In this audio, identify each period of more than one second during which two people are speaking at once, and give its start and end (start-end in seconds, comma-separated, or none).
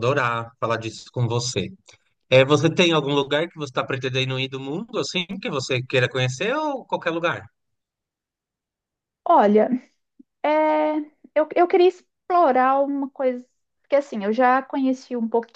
none